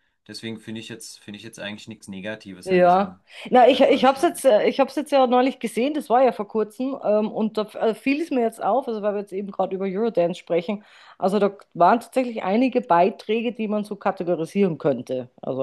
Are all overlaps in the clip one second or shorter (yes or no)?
no